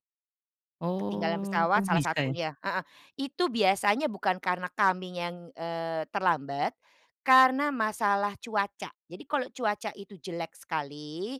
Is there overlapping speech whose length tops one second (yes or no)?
yes